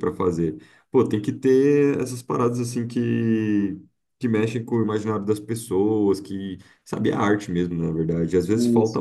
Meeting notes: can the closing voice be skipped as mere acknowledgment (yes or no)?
yes